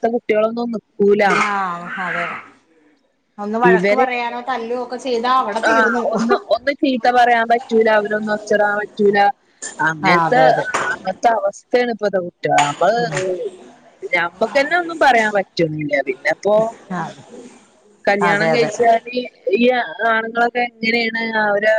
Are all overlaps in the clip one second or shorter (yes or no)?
yes